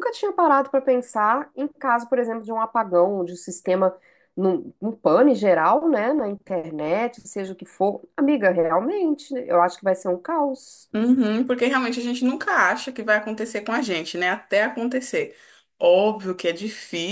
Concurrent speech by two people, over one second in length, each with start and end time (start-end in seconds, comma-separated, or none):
none